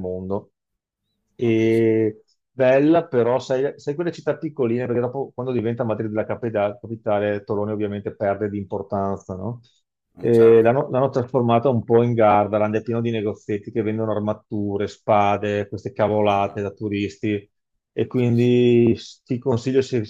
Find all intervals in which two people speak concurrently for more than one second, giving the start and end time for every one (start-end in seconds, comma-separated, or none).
none